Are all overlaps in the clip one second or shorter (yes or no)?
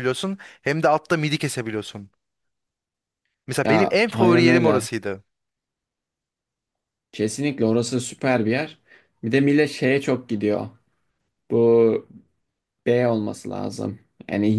no